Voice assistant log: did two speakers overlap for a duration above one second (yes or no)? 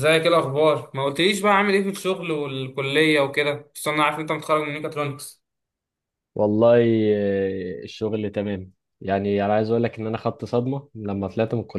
no